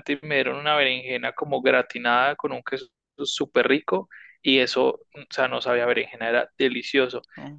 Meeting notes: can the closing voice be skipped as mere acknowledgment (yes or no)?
yes